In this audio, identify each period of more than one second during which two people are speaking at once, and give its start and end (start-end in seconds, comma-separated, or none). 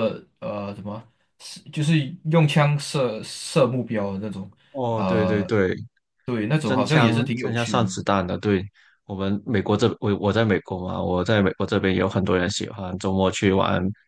6.6-7.9